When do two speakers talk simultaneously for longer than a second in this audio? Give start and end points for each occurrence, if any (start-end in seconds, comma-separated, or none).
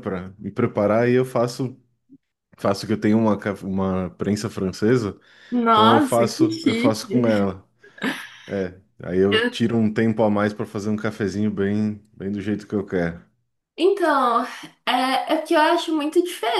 5.7-7.0